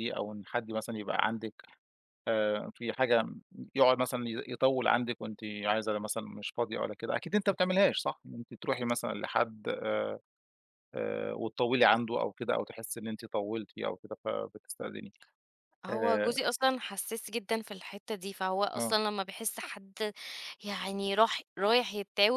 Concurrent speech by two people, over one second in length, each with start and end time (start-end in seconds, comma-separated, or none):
none